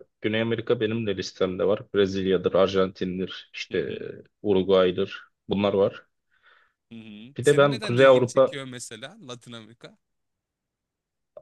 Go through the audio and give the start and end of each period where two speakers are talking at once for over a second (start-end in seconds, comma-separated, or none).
7.4-8.6